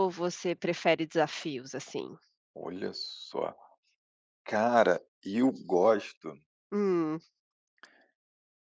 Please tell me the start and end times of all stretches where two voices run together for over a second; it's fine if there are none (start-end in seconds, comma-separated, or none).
none